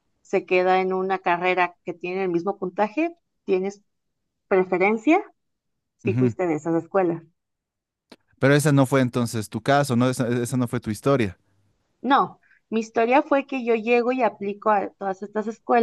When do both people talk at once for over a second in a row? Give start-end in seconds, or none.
none